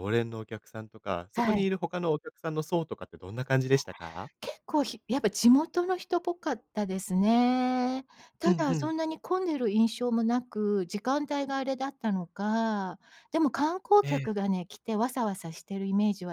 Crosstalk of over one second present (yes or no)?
no